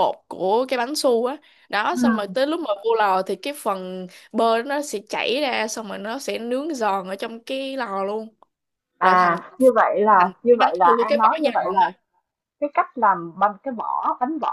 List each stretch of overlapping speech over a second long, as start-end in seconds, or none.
10.2-11.9